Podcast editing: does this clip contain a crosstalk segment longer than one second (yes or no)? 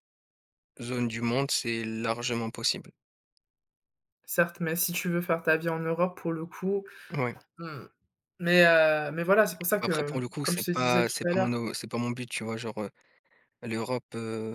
yes